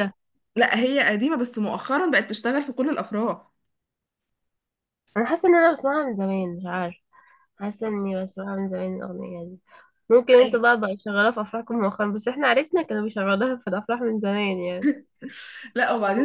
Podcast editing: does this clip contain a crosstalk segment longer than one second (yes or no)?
no